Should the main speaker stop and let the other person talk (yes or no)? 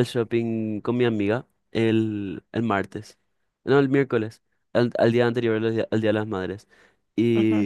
no